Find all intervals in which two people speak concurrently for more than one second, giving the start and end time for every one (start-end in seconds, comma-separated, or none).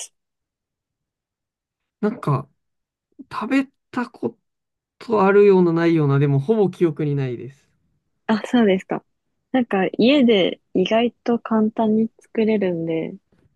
none